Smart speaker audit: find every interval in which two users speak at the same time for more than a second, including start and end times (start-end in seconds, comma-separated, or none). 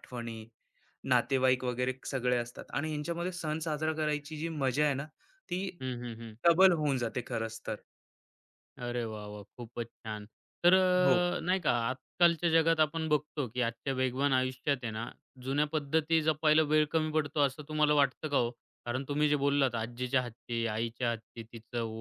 none